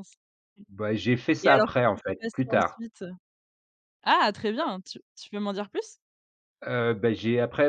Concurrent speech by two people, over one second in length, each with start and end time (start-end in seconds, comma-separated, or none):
1.4-2.8